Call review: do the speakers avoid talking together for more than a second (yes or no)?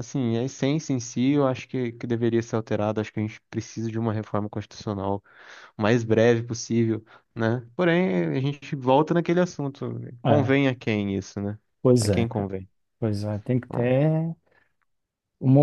yes